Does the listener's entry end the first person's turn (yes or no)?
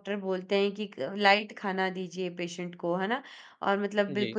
no